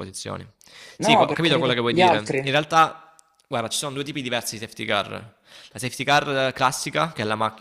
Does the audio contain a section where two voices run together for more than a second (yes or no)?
yes